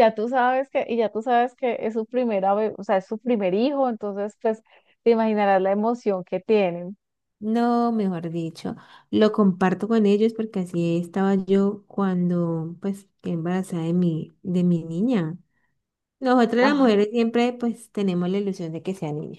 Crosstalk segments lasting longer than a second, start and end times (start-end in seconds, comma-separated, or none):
none